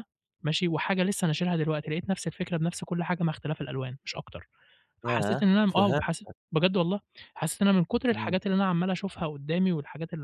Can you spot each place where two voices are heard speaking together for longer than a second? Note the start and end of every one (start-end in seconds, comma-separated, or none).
5.0-6.3